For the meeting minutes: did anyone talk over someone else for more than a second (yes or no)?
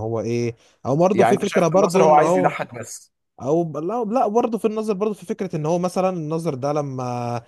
yes